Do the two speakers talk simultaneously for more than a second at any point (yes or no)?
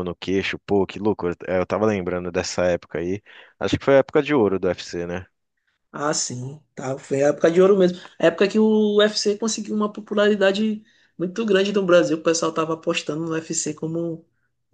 no